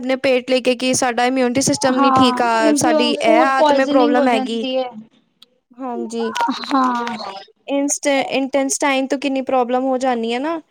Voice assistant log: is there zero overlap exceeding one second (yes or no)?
no